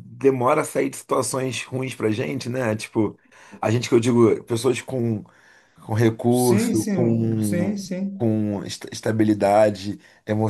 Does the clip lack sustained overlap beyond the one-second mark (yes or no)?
no